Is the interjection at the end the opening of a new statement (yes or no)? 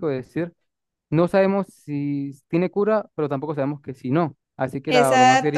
yes